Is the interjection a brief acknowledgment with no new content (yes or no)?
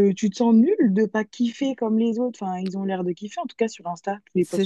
no